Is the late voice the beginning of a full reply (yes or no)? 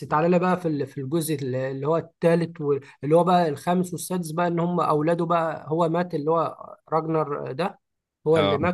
no